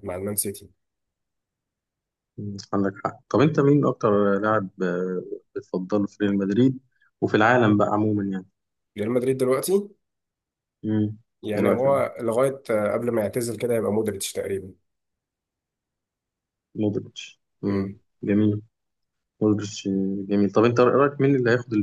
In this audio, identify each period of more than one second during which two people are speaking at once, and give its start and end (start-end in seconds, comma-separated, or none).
none